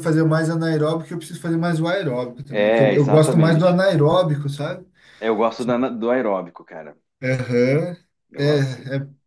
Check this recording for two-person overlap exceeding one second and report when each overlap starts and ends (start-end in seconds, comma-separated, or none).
2.5-3.8